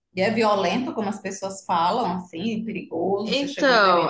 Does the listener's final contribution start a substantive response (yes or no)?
yes